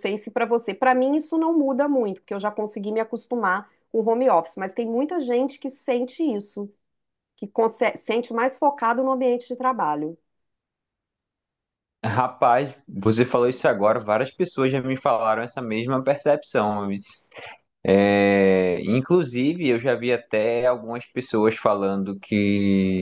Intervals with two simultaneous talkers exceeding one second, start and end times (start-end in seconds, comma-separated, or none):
none